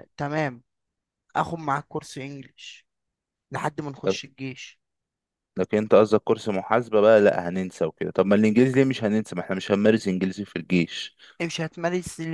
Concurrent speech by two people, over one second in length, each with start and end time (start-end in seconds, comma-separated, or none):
none